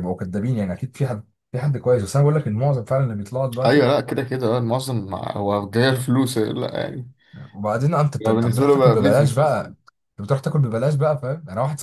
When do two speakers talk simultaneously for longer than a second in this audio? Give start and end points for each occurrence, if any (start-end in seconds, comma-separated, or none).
8.3-9.7